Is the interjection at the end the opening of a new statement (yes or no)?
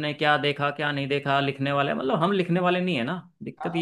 yes